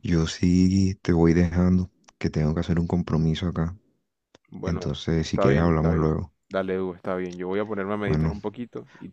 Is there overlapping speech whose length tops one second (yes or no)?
yes